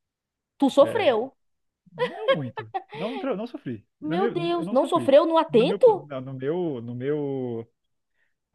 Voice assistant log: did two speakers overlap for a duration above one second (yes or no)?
yes